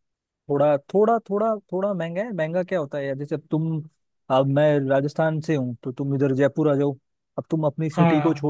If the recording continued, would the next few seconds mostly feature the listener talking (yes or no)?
no